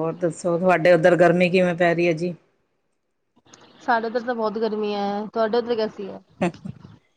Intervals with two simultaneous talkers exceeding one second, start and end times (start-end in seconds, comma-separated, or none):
none